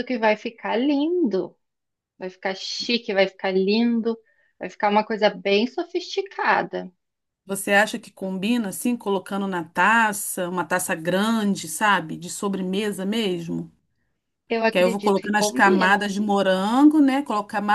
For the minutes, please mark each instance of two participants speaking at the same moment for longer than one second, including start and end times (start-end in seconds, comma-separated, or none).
14.7-16.1